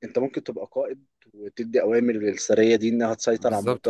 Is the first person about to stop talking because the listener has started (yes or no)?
yes